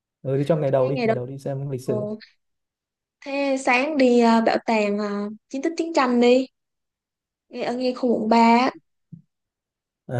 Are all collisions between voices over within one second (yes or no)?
yes